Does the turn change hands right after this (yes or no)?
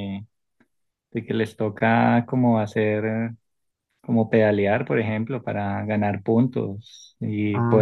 no